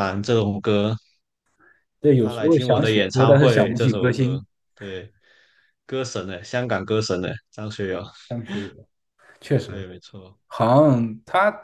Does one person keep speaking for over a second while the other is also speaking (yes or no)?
yes